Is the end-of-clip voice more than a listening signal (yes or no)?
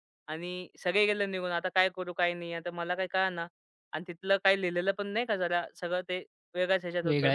yes